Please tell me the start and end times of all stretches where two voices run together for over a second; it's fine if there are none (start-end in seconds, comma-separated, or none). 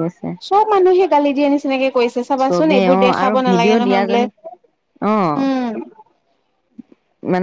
2.5-4.2